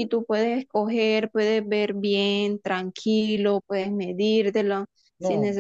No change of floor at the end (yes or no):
yes